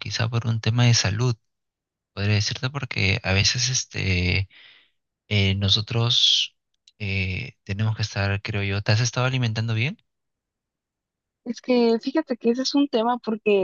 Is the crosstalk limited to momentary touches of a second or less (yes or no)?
yes